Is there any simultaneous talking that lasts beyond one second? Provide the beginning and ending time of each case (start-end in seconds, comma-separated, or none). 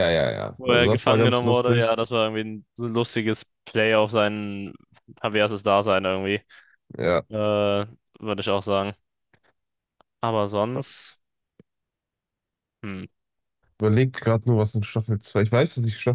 0.6-1.9